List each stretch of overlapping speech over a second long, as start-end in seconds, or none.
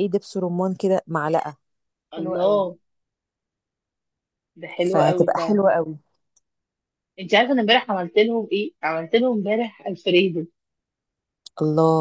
none